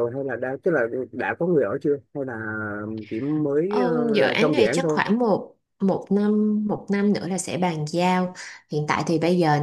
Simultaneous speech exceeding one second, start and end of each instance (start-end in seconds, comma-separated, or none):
3.7-5.0